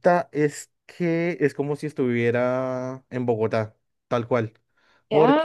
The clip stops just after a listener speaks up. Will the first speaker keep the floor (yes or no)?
yes